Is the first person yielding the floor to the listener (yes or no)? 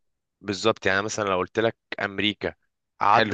no